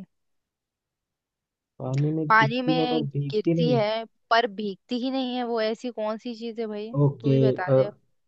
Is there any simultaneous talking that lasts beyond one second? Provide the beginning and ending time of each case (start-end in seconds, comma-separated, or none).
2.3-3.8